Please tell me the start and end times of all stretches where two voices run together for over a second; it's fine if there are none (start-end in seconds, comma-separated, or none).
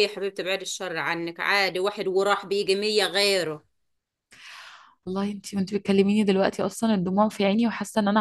none